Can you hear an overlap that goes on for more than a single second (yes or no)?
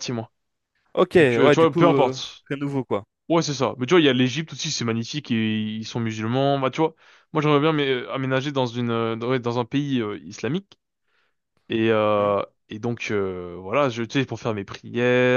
yes